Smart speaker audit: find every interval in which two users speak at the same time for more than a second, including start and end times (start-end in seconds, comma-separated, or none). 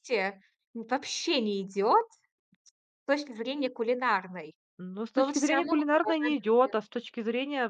5.2-6.3